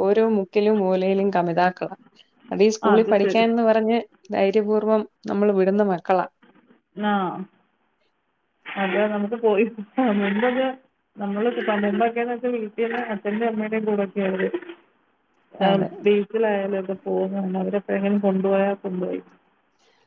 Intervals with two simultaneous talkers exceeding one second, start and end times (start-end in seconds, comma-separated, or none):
none